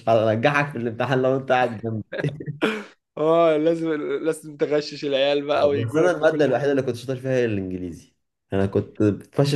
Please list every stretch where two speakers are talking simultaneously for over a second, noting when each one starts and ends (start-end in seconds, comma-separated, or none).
5.5-6.8